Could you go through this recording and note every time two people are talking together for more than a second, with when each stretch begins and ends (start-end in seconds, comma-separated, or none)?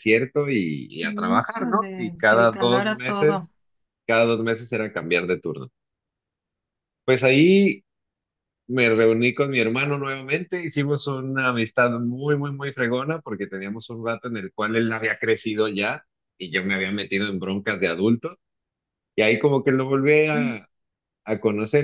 1.0-3.5